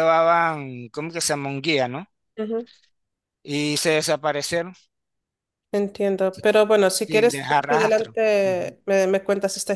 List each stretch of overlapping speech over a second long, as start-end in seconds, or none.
7.1-8.7